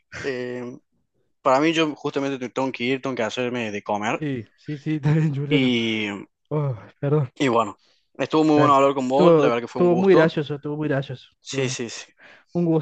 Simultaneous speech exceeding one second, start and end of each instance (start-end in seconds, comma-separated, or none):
8.6-10.3